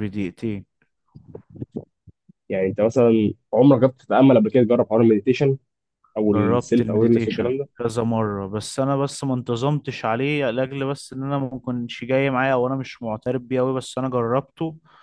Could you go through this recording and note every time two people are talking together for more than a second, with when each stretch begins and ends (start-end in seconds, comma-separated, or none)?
6.3-7.7